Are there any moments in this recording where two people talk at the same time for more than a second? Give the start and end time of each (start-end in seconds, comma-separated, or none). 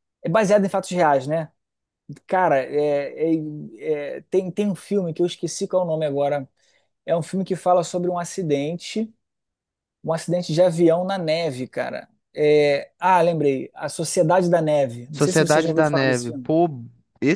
15.1-16.5